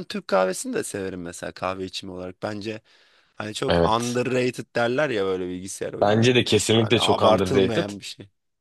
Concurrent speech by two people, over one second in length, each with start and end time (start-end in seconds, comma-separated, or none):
6.0-7.9